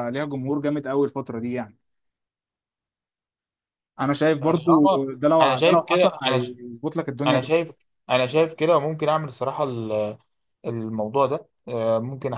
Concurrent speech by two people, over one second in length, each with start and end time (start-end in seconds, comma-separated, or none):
4.4-6.5